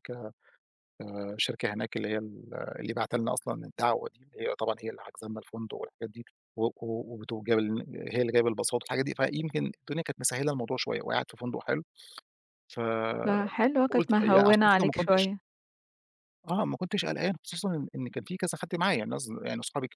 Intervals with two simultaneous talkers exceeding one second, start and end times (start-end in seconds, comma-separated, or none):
13.2-15.3